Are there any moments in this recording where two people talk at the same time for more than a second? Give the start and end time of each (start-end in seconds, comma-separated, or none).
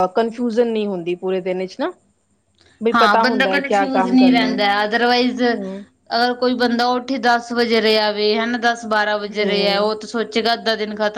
2.9-4.6